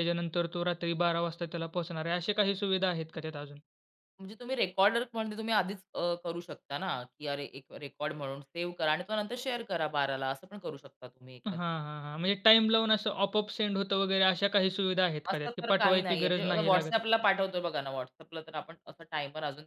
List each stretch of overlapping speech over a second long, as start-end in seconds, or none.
15.3-17.0